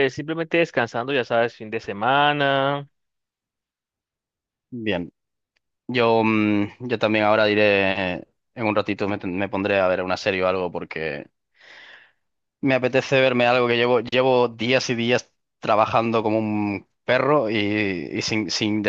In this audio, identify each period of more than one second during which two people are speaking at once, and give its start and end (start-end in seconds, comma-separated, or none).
none